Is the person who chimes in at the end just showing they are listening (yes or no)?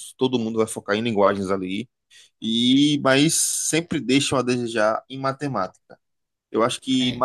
yes